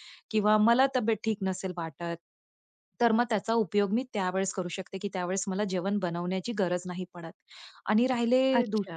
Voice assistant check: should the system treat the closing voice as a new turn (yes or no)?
no